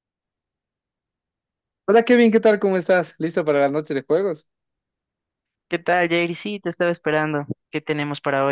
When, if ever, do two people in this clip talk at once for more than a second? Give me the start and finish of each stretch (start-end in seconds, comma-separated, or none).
none